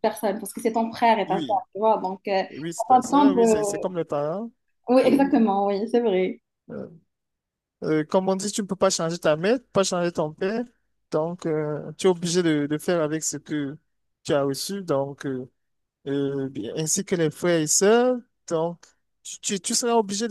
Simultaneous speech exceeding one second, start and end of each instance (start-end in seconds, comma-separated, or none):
2.5-3.9